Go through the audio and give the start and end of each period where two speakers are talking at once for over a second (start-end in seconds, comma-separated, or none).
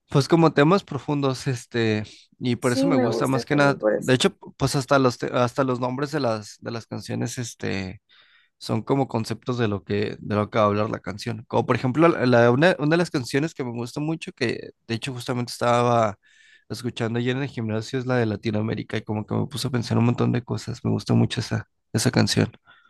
2.6-4.2